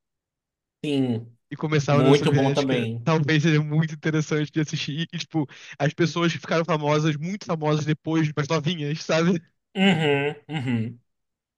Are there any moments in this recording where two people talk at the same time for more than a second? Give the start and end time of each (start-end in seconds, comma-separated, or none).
1.9-3.1